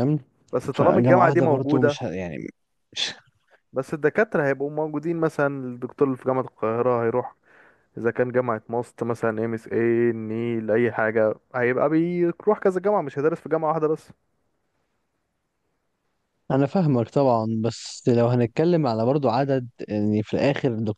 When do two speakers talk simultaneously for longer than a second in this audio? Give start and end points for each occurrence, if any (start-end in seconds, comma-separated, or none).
0.7-2.0